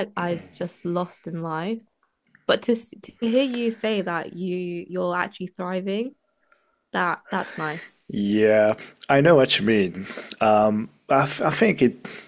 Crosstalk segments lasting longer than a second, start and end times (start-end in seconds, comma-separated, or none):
none